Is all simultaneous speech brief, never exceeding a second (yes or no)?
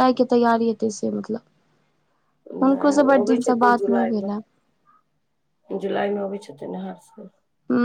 no